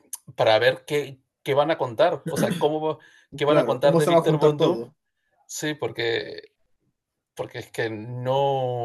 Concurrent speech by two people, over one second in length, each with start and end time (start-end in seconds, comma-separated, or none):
3.5-4.8